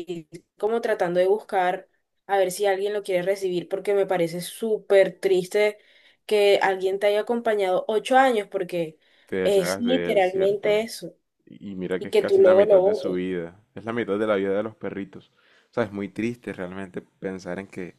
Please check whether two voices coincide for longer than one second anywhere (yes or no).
yes